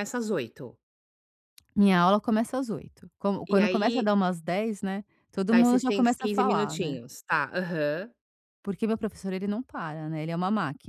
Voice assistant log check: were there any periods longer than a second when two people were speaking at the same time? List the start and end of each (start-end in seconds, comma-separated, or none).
5.5-7.0